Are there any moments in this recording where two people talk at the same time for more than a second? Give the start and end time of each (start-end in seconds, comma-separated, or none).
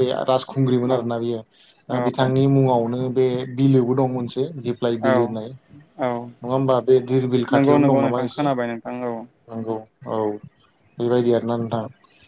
7.5-9.1